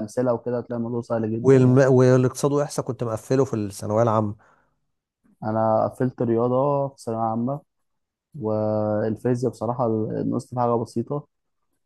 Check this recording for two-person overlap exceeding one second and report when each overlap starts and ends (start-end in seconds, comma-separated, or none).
none